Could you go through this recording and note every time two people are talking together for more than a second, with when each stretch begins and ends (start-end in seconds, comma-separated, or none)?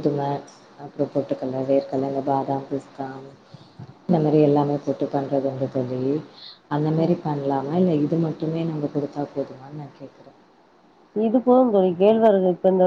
none